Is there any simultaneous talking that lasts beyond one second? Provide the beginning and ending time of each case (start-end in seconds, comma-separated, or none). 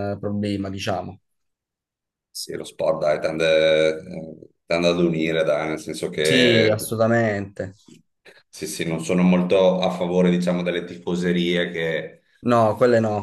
none